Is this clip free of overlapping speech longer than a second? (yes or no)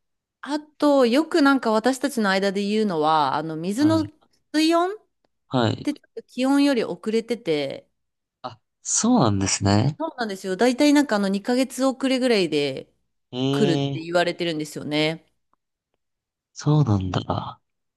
yes